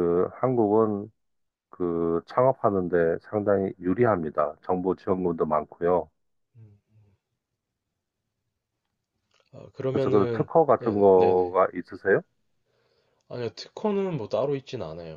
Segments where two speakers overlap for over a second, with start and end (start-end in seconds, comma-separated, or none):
9.9-11.6